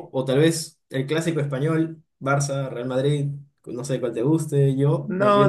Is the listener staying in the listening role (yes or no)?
no